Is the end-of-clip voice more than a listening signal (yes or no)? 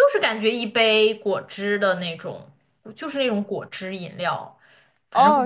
yes